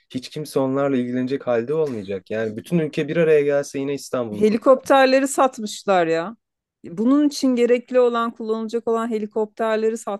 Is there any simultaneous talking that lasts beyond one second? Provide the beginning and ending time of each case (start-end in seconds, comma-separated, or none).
none